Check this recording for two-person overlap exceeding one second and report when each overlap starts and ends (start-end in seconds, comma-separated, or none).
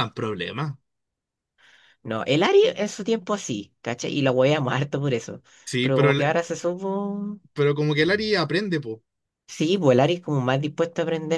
none